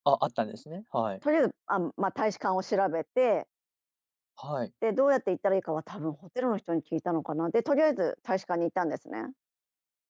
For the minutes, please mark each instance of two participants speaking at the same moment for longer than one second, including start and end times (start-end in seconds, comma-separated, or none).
none